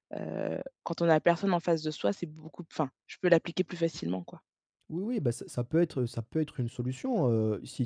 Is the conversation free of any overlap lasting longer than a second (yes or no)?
yes